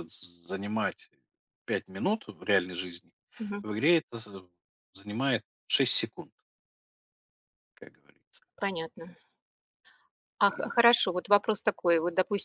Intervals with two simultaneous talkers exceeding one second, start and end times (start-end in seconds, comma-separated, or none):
none